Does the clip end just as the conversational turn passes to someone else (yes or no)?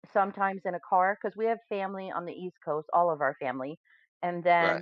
no